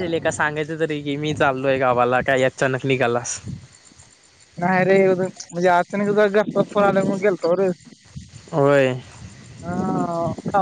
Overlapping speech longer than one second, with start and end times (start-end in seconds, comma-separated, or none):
none